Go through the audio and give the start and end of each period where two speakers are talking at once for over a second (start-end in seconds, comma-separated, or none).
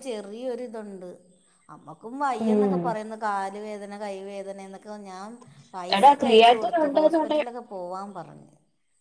6.0-7.4